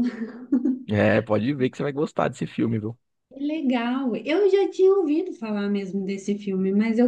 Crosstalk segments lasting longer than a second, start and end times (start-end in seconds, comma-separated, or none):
none